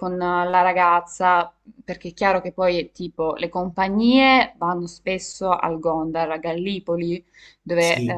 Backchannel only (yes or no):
yes